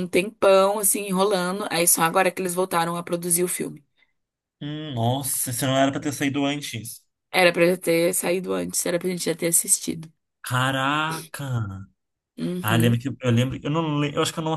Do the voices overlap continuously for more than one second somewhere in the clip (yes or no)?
no